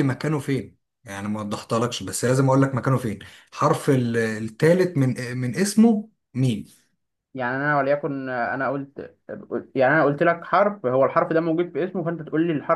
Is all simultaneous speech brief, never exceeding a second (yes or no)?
yes